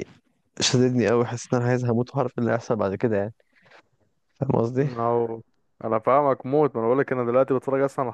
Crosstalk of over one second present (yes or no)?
no